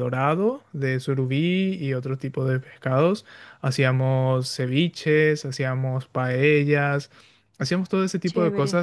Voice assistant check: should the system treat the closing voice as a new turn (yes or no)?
no